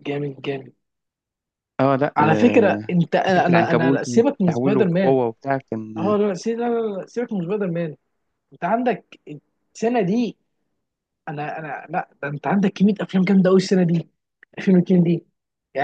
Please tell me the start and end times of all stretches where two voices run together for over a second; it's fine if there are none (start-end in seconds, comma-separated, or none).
2.2-5.2